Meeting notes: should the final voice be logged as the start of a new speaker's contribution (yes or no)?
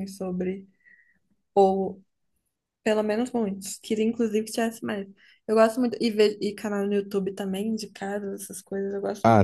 yes